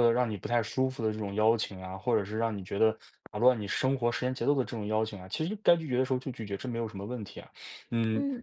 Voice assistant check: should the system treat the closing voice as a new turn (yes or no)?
no